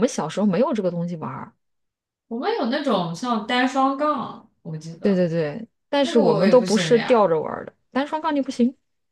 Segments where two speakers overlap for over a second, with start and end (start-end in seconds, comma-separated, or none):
6.0-7.3